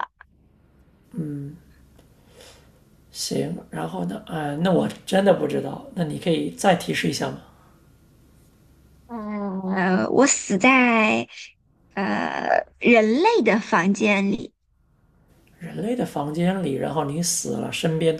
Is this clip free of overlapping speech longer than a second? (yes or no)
yes